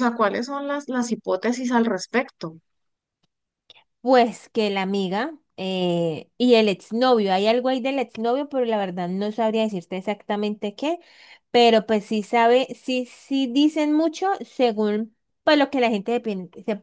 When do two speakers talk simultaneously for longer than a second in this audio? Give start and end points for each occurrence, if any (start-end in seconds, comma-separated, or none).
none